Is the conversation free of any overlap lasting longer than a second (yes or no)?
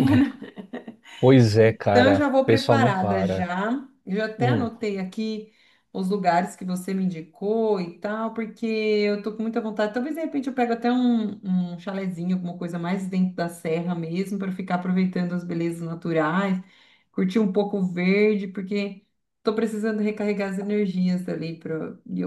no